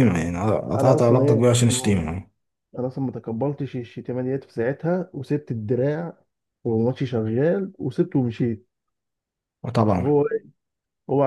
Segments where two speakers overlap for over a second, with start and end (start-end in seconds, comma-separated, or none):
0.8-2.0